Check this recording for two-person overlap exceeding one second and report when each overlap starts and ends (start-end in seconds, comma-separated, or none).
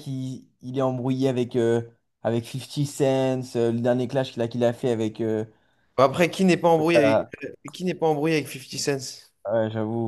none